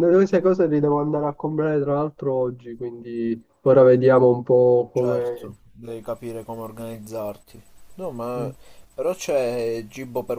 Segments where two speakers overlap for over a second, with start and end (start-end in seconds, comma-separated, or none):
none